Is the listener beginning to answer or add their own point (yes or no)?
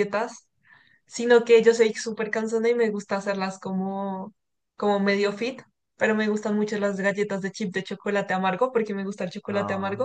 no